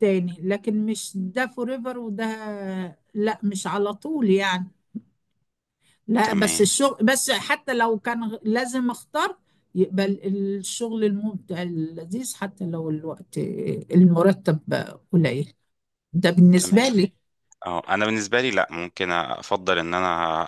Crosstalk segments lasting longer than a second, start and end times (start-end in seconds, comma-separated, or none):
none